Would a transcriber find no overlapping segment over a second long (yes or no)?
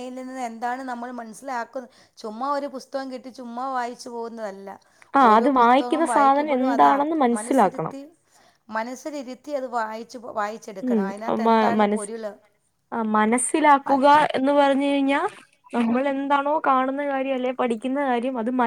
no